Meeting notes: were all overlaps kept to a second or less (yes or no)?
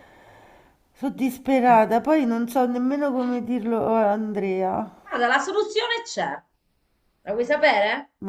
yes